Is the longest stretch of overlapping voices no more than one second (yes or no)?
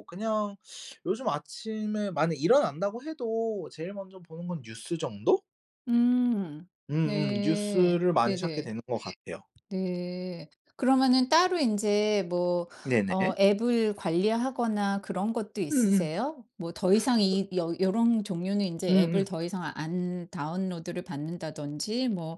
no